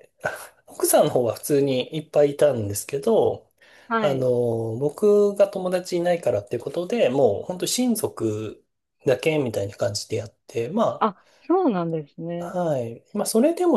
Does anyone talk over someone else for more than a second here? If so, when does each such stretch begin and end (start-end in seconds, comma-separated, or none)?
none